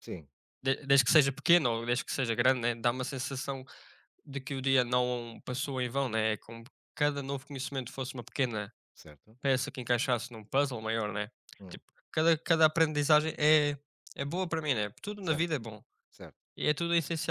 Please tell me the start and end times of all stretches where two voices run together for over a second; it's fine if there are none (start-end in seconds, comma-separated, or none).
none